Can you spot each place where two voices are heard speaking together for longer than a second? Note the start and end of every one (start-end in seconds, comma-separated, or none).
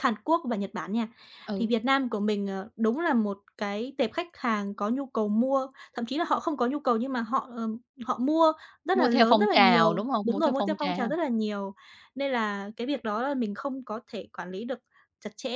8.9-11.1